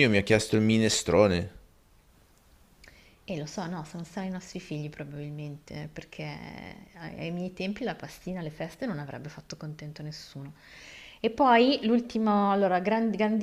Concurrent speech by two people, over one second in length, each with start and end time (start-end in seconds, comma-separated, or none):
none